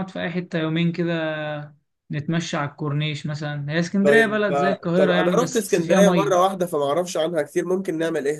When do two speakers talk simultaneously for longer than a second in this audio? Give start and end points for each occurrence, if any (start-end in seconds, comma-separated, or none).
4.0-6.3